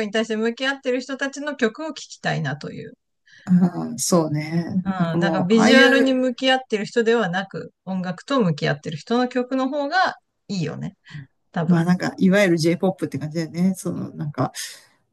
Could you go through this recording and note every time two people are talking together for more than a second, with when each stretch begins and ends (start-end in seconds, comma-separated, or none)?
4.8-6.2